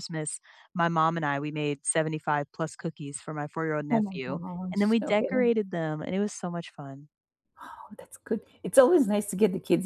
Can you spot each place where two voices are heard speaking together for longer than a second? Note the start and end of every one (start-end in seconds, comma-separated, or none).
3.9-5.5